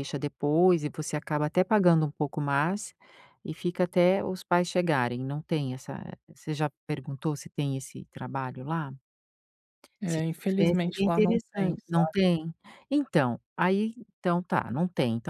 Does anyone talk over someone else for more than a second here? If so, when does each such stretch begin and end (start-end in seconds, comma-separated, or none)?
10.1-12.2